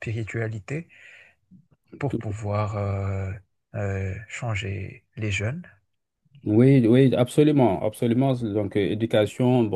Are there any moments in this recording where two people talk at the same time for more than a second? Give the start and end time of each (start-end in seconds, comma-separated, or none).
none